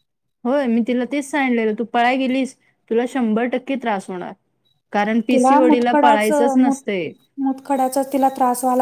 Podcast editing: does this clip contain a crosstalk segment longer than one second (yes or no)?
yes